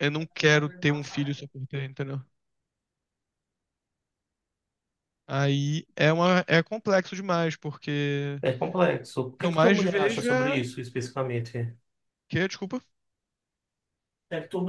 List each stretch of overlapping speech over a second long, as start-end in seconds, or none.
9.3-10.6